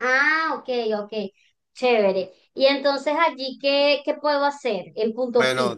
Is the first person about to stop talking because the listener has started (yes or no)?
yes